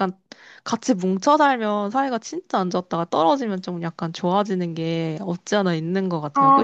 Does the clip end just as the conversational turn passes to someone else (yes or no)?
yes